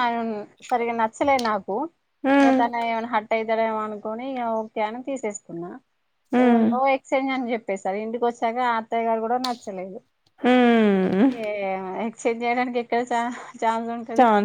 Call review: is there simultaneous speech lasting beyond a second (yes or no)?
no